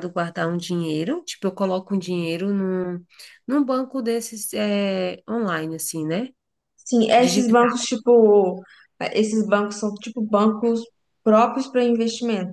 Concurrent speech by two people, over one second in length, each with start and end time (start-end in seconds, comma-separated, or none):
none